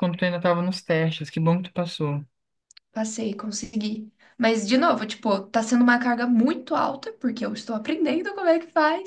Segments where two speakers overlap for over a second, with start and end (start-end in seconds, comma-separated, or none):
none